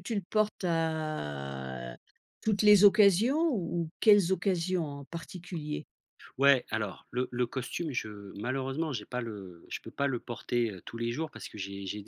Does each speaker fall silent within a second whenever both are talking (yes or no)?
yes